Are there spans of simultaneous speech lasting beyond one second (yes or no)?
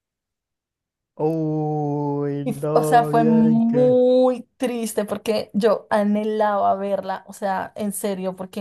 yes